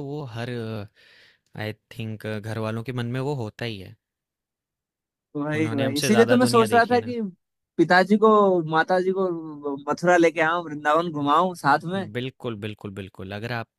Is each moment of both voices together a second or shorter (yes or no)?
no